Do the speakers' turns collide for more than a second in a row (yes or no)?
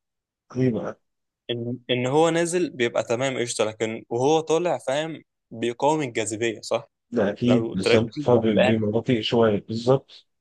yes